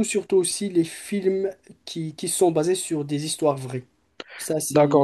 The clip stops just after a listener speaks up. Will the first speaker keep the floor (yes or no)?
no